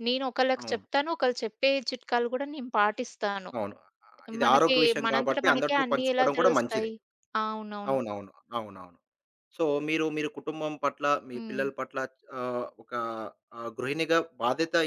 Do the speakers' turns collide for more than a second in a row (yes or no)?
yes